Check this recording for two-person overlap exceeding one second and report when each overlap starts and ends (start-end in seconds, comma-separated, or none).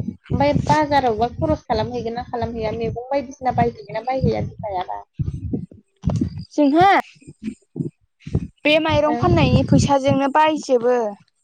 none